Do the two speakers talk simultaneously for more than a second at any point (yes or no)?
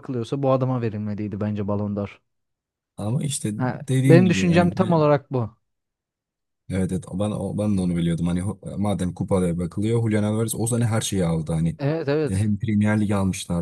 yes